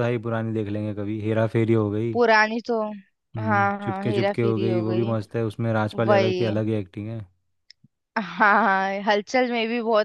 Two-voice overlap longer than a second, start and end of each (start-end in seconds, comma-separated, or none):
3.4-5.1